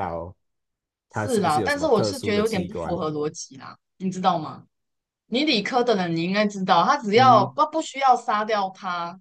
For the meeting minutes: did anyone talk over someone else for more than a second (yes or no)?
yes